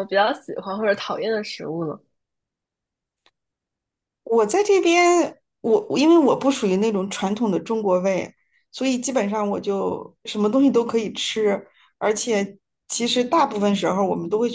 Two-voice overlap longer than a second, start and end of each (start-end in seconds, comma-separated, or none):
none